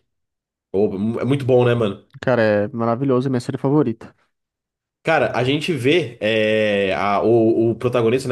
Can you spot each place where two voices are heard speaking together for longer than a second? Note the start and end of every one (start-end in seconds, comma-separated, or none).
none